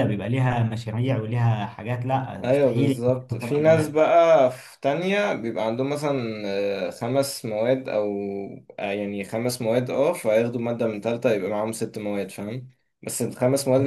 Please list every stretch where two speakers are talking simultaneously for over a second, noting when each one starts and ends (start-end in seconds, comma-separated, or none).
2.4-4.0